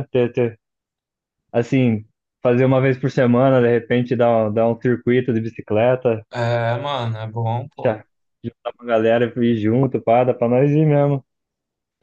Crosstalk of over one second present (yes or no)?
no